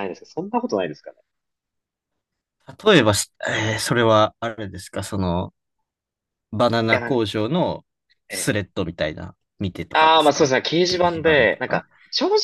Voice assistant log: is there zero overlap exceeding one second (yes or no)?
no